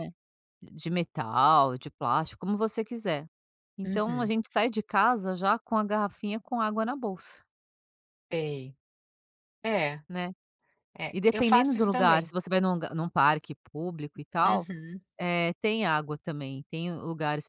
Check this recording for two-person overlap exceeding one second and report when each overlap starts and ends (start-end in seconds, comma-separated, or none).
11.1-12.3